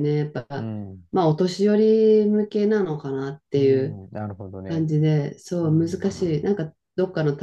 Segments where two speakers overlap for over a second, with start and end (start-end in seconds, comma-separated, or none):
none